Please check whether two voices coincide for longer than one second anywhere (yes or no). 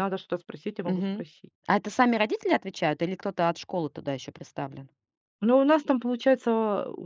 no